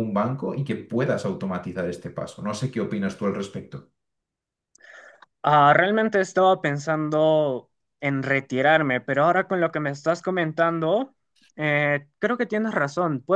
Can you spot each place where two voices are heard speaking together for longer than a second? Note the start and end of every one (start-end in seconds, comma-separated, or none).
none